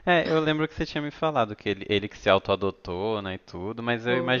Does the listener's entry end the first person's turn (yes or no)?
no